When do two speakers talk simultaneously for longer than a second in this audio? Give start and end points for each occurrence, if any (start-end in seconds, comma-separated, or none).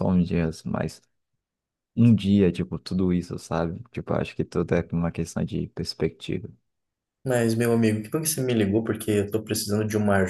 none